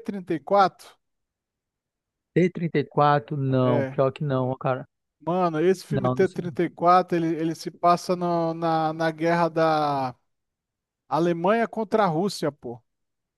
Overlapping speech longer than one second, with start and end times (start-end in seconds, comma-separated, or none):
none